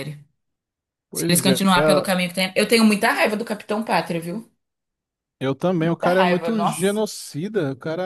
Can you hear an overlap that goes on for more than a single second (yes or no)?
yes